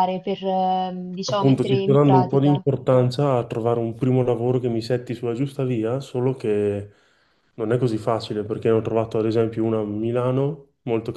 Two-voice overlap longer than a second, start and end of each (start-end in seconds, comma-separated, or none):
1.3-2.6